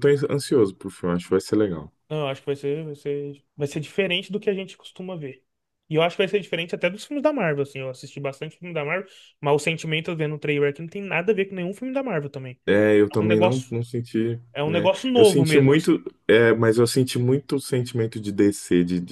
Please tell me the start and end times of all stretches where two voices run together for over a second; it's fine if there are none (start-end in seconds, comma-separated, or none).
14.5-15.9